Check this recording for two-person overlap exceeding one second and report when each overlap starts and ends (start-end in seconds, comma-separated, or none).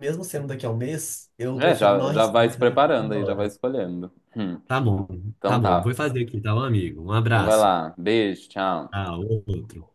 1.5-3.5